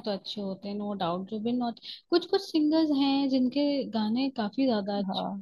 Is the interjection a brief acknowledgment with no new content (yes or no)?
no